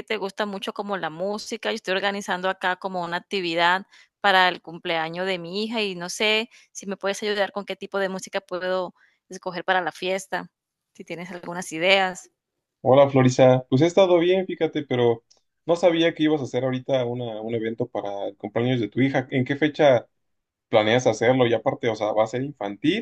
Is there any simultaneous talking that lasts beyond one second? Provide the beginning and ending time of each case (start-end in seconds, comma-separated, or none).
none